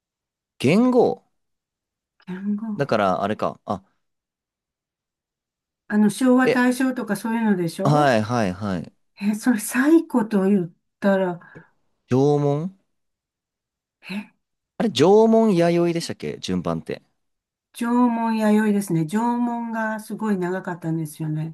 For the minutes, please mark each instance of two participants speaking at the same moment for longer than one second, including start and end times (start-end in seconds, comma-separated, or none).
none